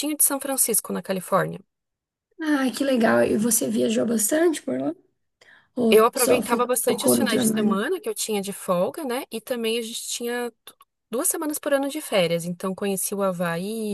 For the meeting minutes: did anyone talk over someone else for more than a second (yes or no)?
yes